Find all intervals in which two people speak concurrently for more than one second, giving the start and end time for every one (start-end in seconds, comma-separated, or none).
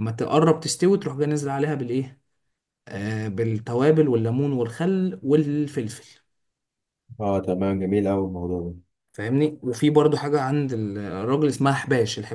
none